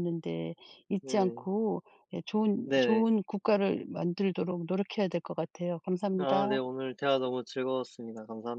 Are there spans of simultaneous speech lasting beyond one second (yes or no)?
no